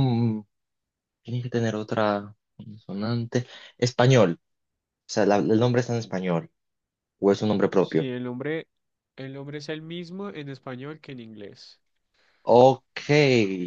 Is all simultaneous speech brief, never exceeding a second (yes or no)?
yes